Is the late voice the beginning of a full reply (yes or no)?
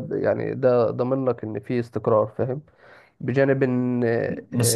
yes